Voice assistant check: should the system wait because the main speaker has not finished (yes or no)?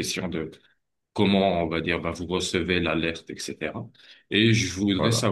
yes